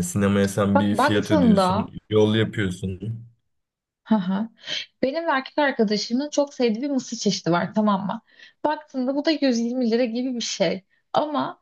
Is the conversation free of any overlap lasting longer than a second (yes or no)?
no